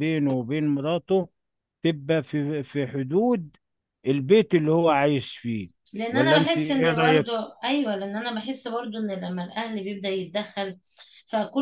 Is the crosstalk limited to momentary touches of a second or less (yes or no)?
no